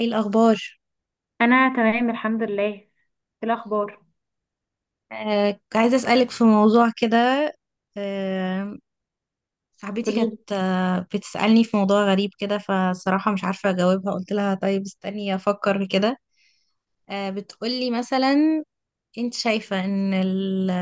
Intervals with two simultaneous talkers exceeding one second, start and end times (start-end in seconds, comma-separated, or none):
none